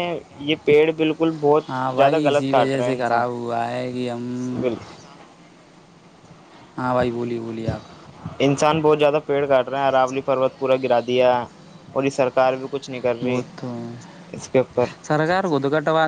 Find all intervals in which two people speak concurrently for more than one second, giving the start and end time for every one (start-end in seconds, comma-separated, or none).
1.7-3.2